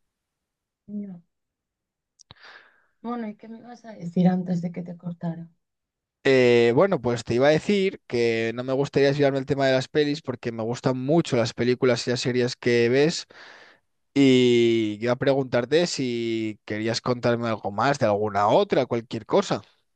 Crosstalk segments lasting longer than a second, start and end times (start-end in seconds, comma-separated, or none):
none